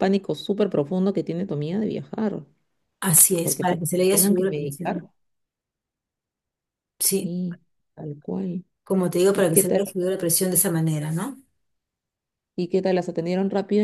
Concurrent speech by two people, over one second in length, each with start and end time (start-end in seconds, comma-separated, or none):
3.4-5.0